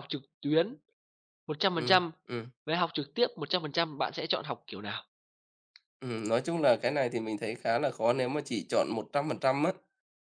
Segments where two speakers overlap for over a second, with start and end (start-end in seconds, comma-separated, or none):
none